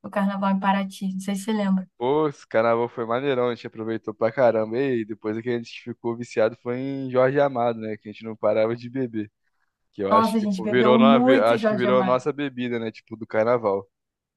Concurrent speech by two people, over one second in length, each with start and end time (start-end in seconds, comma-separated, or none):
10.1-12.2